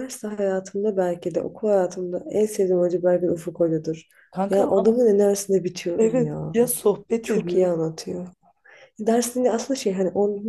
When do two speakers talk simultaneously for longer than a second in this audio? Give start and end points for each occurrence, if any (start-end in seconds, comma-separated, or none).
none